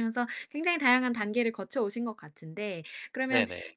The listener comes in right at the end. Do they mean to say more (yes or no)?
no